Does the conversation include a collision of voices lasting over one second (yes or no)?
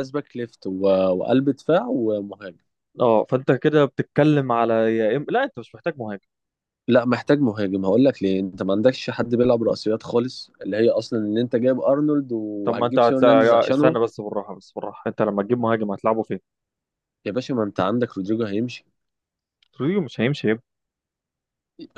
yes